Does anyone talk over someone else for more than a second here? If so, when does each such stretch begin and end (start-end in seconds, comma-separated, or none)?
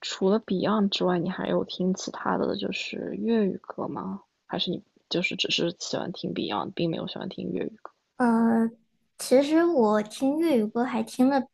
none